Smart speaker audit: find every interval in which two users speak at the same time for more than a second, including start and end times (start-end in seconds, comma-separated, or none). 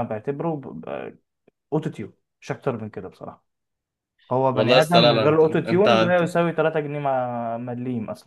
4.5-6.3